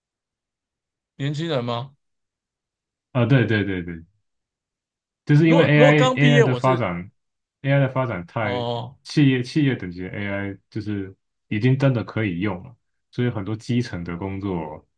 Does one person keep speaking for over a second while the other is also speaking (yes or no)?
yes